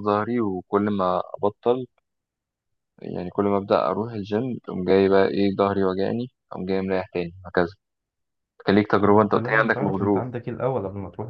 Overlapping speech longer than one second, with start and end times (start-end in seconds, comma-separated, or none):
9.0-10.3